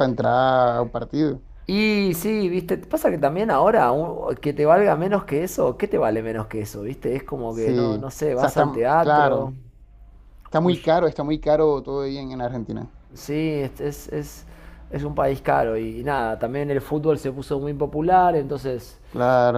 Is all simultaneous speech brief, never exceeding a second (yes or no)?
no